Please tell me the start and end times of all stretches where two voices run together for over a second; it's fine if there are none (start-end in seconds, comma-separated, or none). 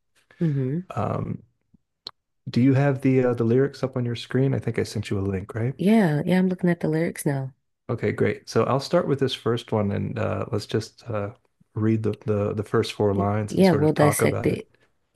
13.1-14.6